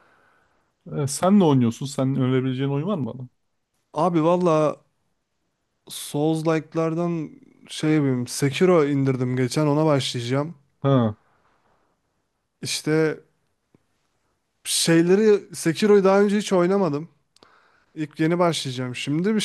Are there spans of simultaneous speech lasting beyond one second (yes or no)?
no